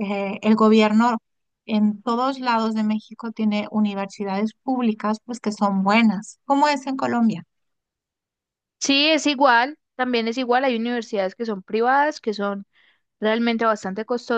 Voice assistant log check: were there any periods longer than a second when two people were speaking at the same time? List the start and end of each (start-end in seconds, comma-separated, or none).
none